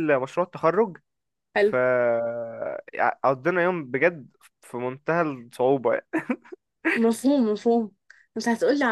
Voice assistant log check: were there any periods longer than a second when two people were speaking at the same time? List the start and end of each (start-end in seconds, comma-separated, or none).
none